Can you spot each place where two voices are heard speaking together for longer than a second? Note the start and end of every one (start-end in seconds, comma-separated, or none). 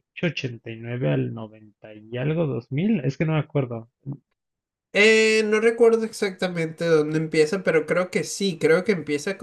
none